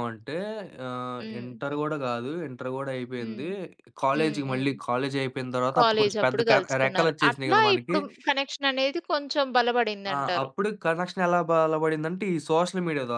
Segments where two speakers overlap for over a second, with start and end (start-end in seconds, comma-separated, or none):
5.7-8.0